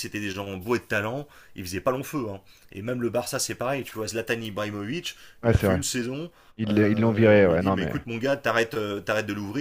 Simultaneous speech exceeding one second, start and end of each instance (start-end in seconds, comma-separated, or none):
6.7-8.0